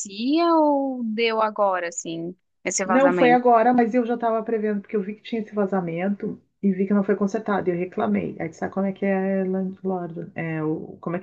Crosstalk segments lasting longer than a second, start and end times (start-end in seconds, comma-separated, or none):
none